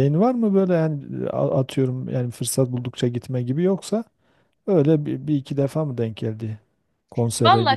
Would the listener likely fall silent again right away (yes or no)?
no